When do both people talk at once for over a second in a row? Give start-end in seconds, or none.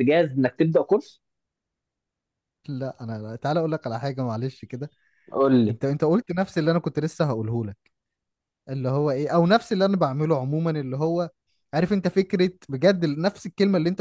none